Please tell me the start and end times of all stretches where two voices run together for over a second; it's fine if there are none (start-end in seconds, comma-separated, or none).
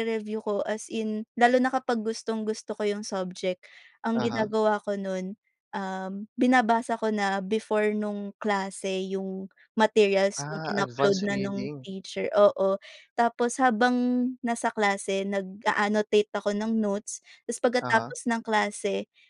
10.4-11.9